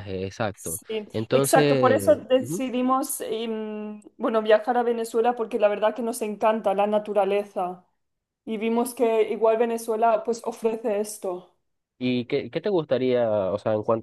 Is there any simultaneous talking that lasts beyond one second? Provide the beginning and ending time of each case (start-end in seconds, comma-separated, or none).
0.6-2.6